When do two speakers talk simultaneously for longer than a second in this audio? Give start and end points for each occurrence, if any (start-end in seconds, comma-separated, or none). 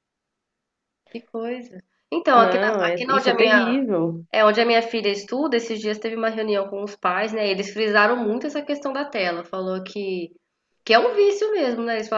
2.3-3.8